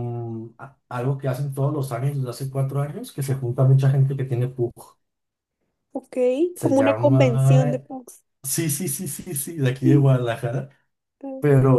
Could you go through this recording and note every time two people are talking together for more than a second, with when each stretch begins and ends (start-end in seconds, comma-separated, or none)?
6.6-7.8